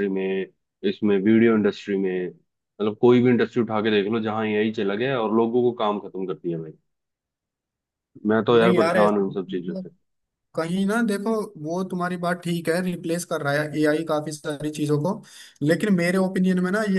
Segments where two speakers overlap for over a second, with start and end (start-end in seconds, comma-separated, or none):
8.5-9.9